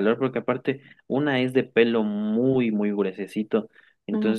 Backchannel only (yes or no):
yes